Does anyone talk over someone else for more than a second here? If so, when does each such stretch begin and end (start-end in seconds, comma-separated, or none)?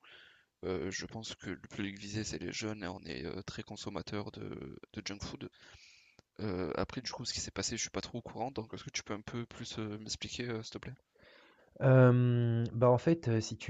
none